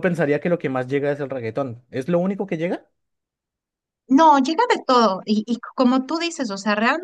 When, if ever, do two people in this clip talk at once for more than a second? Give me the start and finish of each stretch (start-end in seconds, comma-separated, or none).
none